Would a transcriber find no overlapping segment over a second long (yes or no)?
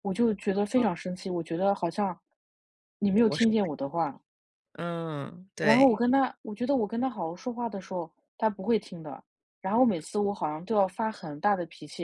yes